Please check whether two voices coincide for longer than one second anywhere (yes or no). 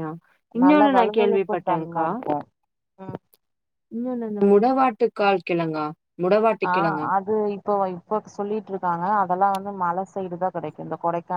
yes